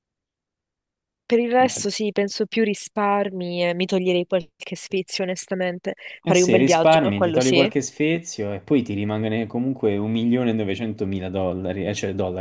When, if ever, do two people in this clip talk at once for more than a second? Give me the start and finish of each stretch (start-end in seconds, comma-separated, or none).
6.3-7.7